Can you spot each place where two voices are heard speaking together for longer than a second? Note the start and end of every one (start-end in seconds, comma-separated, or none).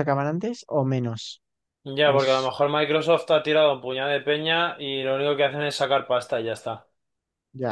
none